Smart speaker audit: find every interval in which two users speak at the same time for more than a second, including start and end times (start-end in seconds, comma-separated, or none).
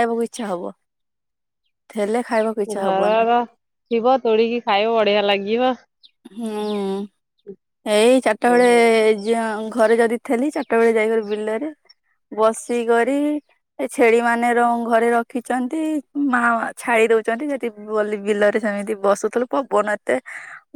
none